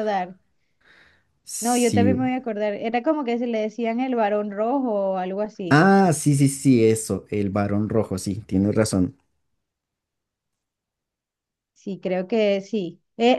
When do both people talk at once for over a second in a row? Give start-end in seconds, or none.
none